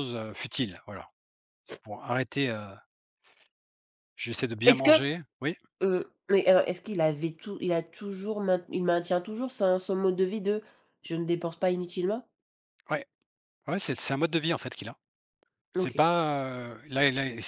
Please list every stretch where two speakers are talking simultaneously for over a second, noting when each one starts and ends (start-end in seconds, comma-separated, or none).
none